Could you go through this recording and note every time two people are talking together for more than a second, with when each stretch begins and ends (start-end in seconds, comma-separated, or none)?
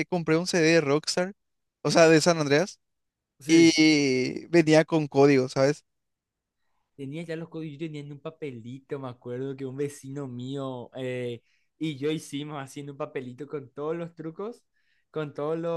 none